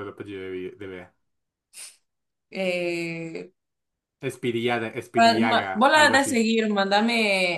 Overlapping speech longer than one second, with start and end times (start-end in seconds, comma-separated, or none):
5.1-6.5